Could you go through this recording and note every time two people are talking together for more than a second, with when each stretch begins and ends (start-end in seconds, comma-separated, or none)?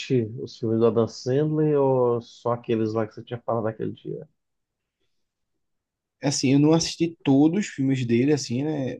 none